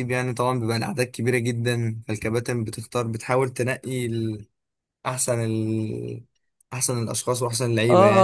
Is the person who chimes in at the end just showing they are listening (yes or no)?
no